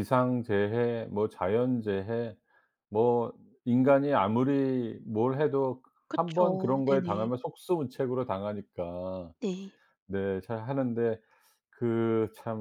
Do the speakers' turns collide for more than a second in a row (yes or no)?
yes